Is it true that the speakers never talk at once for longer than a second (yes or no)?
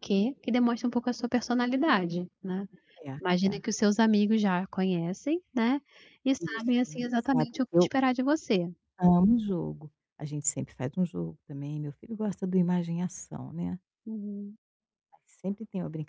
no